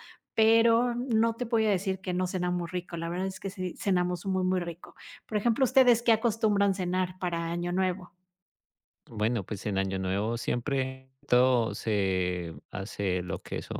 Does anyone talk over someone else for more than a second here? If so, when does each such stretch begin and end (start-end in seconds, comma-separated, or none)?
none